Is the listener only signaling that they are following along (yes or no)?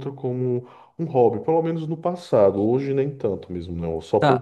no